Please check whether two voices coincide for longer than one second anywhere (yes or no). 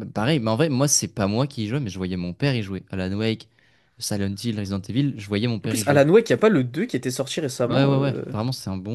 no